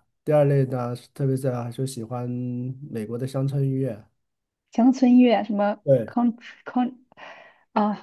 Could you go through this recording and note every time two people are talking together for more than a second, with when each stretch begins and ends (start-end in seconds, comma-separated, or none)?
none